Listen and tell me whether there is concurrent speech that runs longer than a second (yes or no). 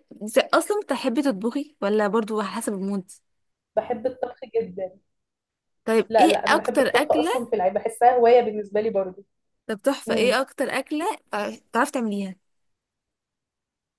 yes